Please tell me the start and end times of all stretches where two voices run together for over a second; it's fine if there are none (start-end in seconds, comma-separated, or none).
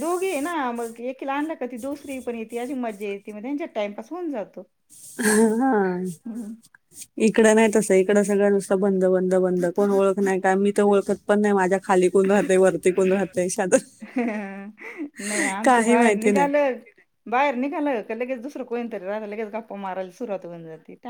none